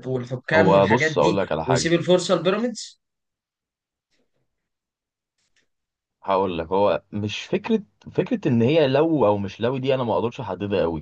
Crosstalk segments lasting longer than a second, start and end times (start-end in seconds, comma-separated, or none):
0.5-1.9